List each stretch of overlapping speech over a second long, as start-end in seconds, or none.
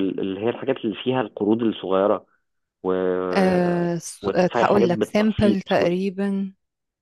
4.2-5.6